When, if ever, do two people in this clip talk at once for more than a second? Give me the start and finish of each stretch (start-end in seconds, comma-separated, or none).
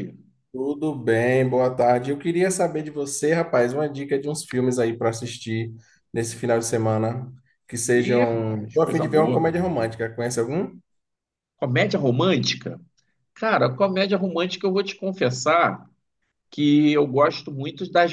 7.9-9.6